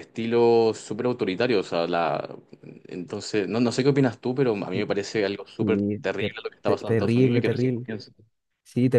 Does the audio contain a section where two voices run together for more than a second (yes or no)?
yes